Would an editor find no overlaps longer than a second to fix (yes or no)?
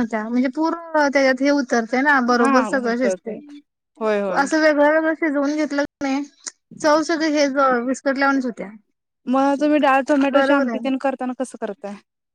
yes